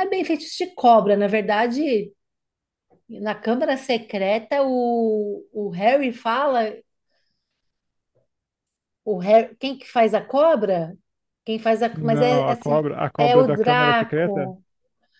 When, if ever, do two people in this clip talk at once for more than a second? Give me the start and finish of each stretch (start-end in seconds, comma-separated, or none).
11.9-14.5